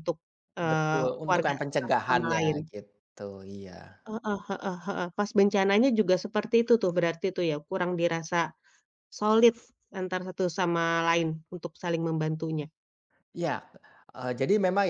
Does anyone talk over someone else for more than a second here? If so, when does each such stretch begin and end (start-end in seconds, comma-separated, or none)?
0.7-2.6